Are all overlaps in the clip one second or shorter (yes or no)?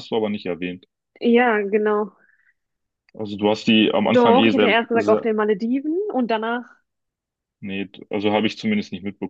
no